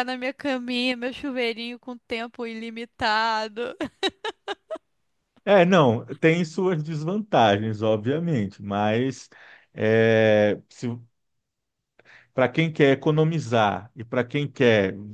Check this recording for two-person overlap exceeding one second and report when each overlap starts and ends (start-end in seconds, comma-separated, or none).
none